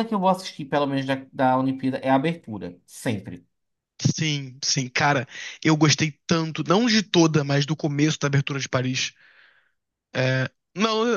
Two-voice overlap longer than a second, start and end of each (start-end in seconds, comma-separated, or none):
none